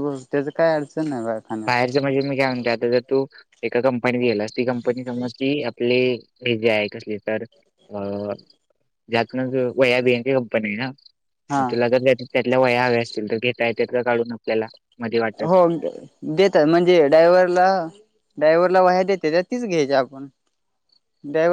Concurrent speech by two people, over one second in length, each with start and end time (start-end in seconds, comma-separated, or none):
none